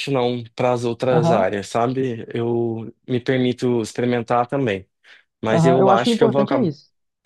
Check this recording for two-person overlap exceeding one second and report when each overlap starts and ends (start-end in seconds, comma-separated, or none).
5.5-6.7